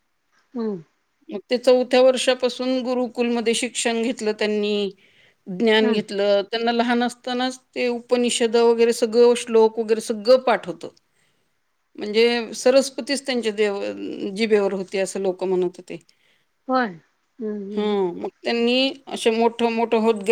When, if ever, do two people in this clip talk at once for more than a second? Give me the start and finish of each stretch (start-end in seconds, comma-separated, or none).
none